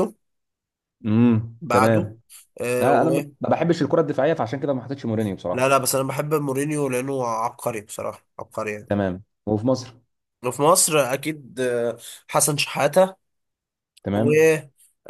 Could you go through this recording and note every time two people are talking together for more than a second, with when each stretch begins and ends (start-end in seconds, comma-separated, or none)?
none